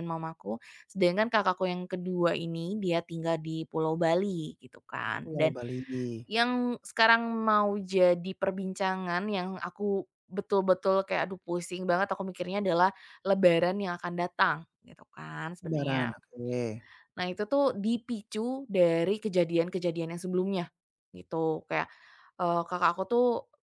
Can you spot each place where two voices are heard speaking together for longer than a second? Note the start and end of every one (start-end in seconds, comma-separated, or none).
none